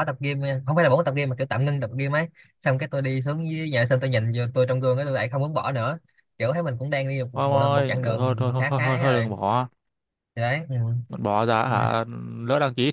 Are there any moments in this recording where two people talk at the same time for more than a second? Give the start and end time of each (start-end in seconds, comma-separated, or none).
7.3-9.4